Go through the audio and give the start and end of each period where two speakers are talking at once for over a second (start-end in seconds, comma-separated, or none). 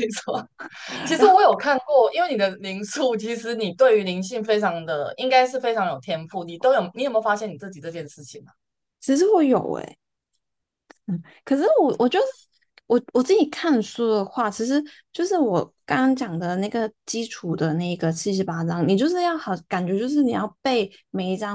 none